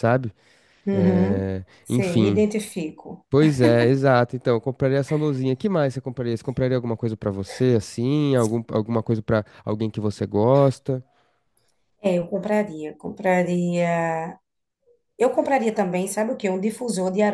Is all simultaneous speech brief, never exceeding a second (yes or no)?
no